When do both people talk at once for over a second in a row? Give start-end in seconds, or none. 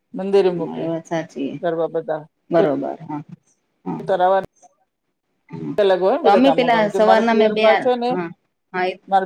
6.2-8.1